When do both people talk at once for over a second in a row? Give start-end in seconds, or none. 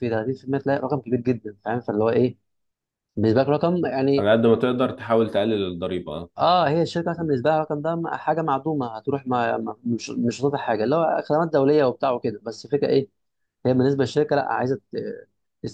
none